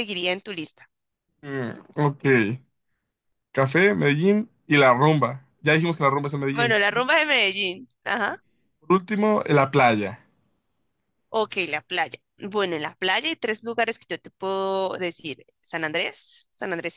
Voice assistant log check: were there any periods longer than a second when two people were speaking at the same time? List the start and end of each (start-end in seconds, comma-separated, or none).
none